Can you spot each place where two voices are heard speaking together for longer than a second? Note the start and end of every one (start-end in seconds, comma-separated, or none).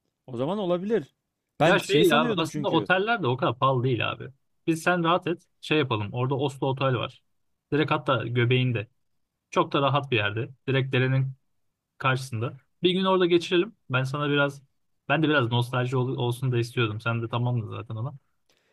1.7-2.9